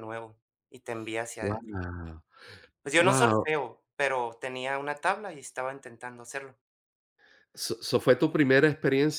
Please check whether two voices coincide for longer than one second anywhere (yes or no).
no